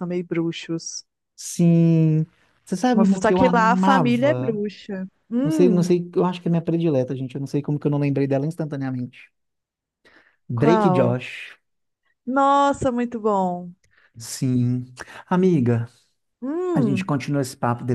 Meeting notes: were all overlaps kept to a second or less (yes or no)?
no